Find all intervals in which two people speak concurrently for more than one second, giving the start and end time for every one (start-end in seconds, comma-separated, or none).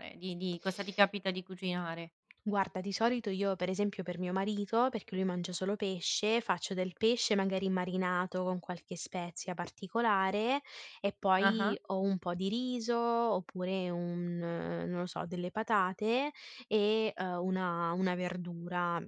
none